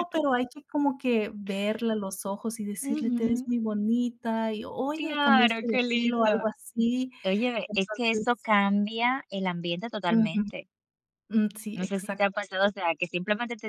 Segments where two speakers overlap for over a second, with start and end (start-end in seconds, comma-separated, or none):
4.9-6.4